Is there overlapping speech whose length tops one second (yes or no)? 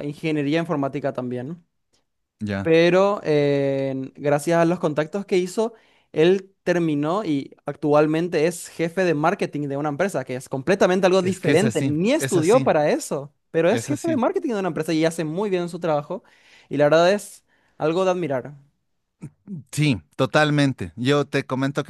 yes